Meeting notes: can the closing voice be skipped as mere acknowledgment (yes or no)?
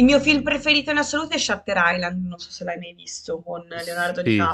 no